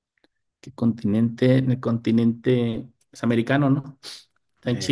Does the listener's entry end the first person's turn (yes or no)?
no